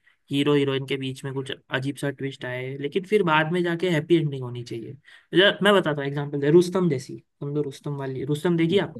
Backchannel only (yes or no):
no